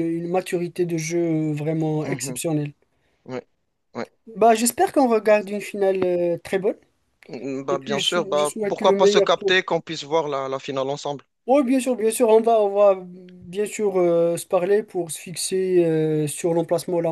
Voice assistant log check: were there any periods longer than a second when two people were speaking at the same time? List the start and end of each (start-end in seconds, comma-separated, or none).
7.7-9.6